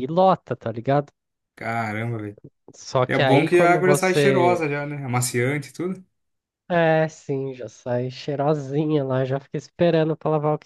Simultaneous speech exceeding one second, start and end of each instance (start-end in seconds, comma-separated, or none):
3.1-4.7